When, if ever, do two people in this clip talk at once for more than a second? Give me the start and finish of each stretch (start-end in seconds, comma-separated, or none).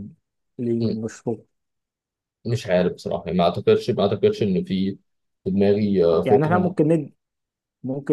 none